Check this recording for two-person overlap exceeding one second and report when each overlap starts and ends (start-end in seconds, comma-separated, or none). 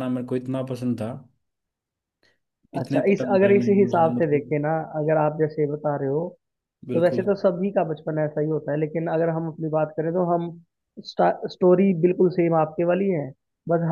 2.8-4.5